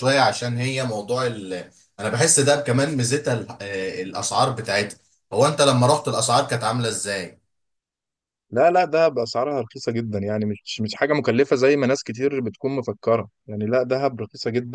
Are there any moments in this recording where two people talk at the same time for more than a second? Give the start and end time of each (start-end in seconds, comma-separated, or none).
none